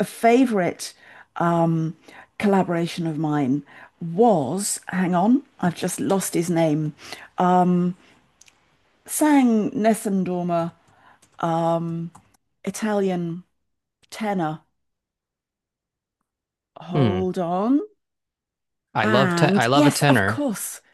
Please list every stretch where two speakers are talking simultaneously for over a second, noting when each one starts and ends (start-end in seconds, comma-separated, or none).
19.0-20.4